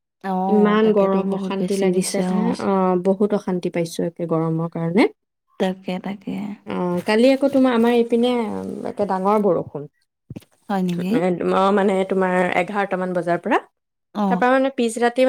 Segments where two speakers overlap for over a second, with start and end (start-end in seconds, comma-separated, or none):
0.5-2.2